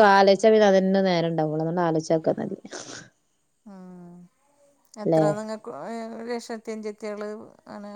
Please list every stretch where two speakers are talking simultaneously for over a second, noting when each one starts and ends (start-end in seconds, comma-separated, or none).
none